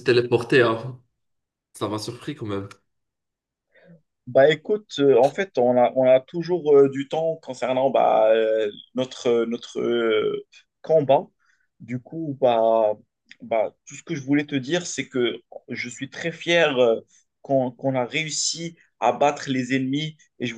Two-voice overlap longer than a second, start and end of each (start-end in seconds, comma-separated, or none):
none